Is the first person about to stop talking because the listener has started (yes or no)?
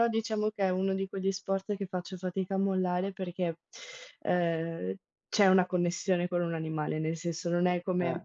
no